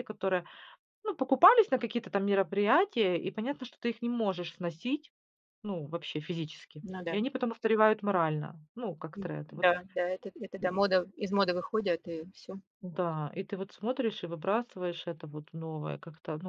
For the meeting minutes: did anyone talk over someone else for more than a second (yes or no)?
no